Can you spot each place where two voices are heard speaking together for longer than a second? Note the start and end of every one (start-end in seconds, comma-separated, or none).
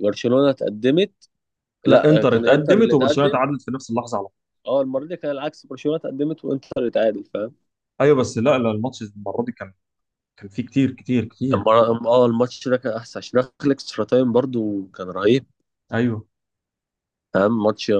1.9-3.4